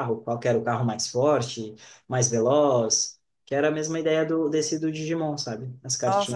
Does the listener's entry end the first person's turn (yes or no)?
yes